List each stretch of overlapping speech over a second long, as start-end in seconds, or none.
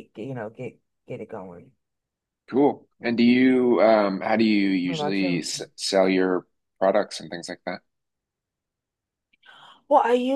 none